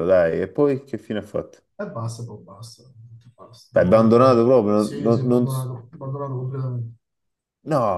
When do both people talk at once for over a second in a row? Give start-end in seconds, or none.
3.7-5.5